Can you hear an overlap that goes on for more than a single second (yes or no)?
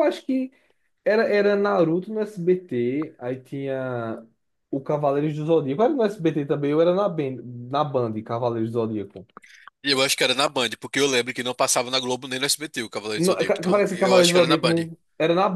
yes